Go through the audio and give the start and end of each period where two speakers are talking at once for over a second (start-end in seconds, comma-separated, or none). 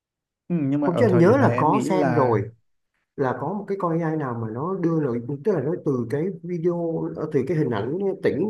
0.8-2.4